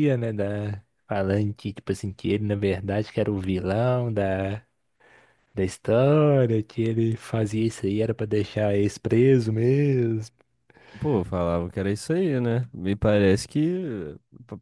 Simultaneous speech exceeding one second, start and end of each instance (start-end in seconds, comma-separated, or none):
none